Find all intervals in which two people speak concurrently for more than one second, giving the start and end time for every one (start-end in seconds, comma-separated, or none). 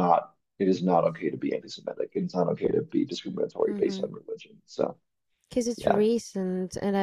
none